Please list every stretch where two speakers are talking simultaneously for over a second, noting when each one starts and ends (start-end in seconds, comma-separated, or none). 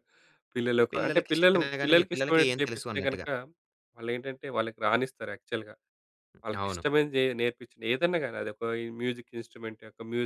0.9-3.3